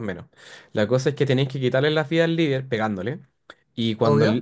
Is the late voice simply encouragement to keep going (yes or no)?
yes